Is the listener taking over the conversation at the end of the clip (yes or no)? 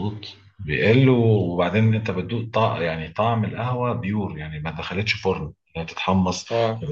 no